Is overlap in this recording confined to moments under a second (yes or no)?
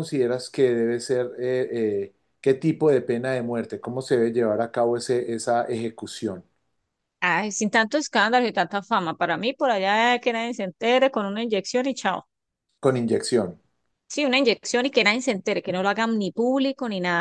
yes